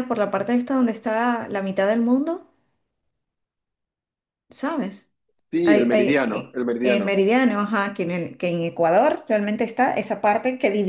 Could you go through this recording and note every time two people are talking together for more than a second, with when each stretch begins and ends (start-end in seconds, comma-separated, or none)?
5.6-7.2